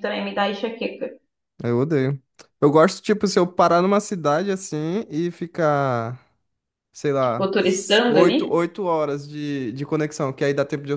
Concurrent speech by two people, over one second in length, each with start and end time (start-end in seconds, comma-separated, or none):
7.2-8.7